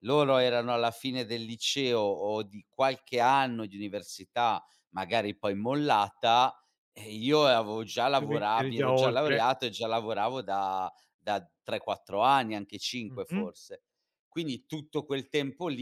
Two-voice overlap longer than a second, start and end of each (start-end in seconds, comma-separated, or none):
8.2-9.4